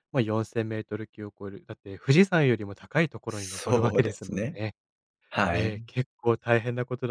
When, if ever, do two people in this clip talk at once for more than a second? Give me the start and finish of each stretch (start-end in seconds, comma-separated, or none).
3.3-4.6